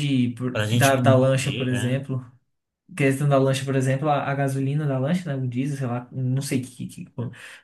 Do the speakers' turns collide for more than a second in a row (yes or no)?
yes